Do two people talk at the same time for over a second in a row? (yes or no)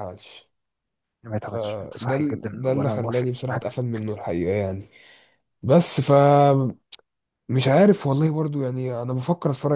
yes